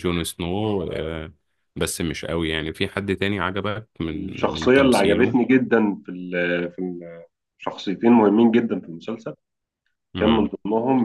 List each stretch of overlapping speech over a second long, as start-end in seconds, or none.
4.0-5.4